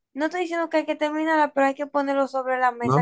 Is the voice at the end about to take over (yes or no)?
yes